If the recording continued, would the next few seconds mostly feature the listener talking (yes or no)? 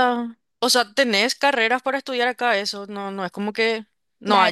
yes